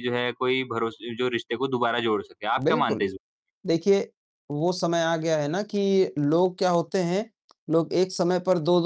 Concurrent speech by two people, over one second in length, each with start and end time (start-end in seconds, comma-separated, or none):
none